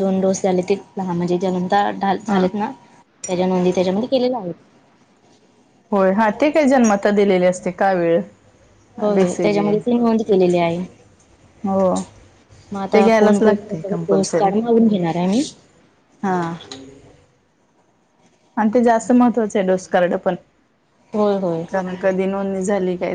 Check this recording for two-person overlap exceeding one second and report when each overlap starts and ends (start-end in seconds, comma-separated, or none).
12.9-14.5